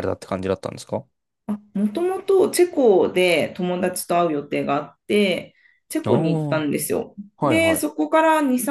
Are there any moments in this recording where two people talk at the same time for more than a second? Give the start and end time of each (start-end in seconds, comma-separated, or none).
none